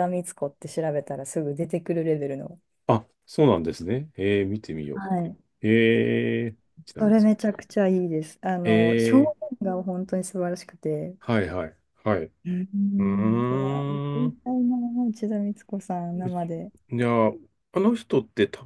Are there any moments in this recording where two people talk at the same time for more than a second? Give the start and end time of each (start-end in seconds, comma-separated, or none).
13.0-14.5